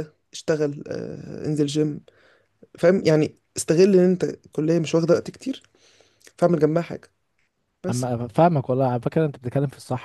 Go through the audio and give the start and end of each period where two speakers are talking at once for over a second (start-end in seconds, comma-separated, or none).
none